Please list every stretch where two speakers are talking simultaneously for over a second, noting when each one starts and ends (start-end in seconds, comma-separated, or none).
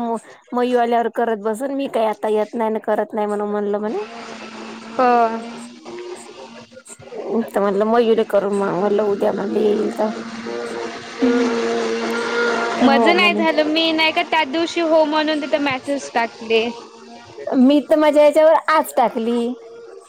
none